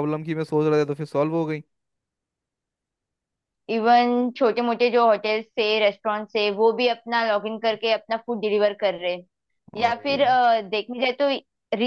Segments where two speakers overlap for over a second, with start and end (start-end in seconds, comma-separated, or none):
none